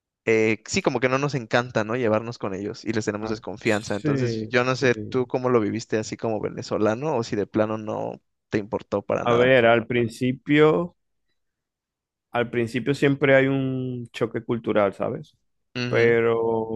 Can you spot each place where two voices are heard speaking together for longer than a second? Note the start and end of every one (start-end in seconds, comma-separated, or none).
3.2-5.3